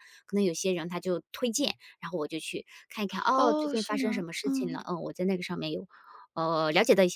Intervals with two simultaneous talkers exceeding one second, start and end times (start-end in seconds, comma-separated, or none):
3.3-4.8